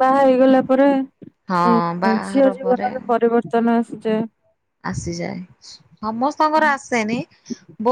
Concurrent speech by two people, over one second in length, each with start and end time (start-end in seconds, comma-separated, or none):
none